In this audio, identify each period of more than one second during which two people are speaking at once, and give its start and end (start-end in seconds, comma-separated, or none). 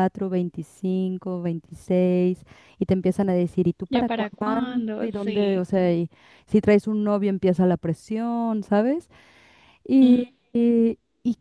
3.9-5.7